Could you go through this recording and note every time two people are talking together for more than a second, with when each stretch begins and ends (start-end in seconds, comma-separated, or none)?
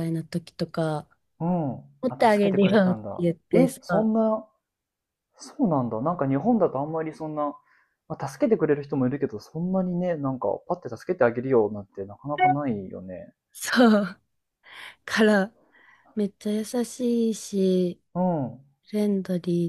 2.0-3.8